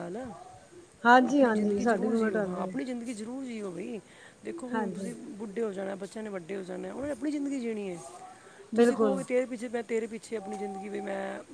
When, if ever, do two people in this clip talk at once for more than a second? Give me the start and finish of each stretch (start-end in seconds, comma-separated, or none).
1.3-2.8